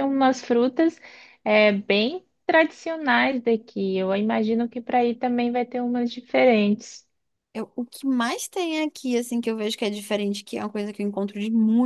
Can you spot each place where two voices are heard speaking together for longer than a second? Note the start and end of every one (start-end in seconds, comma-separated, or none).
none